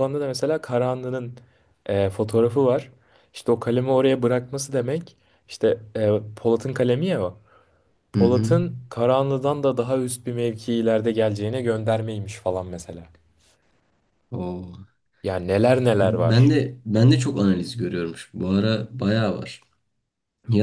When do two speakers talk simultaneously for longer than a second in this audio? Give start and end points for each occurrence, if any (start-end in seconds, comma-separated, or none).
none